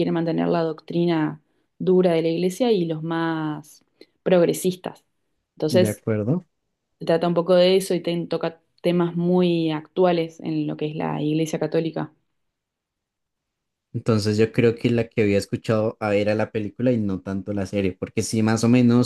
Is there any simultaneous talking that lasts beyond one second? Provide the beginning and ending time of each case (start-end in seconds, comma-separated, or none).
none